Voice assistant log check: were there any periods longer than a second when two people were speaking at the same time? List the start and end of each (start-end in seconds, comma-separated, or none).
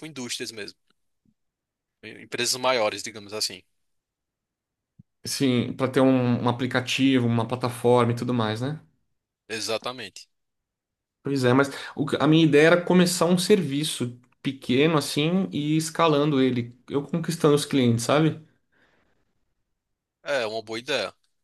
none